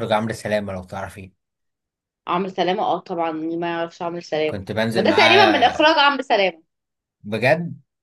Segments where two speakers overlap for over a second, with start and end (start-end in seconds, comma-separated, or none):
4.5-6.0